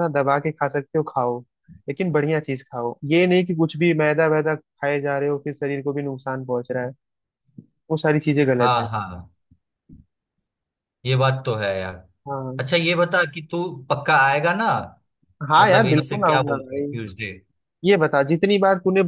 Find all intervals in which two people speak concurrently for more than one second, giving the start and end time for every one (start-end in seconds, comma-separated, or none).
15.6-16.9